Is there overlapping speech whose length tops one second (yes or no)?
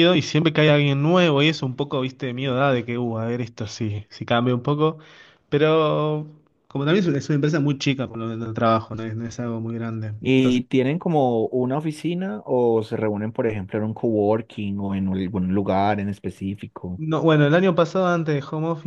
no